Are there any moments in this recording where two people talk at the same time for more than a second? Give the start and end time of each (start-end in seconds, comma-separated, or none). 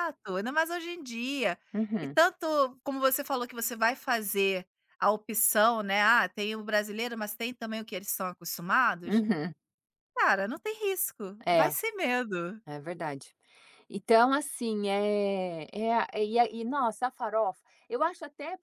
none